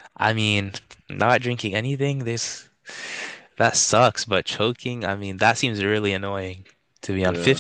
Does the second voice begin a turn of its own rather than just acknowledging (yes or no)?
no